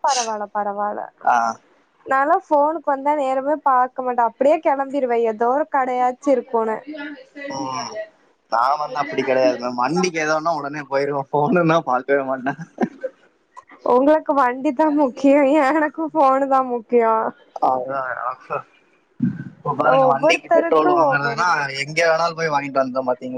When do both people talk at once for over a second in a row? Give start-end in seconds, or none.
20.1-21.5